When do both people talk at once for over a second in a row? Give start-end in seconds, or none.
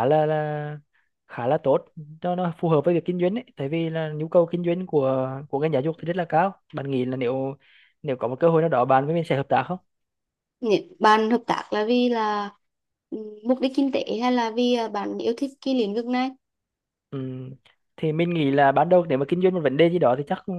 none